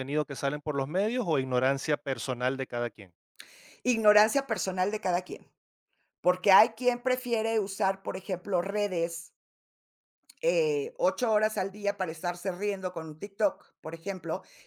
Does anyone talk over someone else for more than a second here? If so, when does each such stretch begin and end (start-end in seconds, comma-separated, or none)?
none